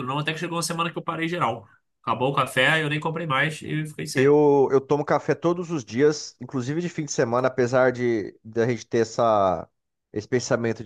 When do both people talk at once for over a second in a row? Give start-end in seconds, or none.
none